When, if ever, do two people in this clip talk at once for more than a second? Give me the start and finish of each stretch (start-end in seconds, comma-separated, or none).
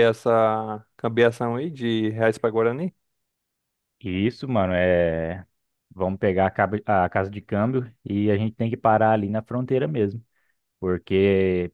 none